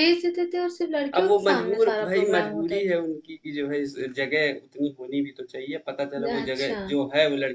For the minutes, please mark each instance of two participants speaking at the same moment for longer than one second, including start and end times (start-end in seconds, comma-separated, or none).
1.2-3.0